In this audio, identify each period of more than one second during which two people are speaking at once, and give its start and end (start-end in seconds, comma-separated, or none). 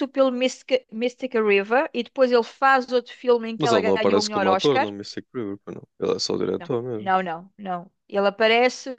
3.6-4.9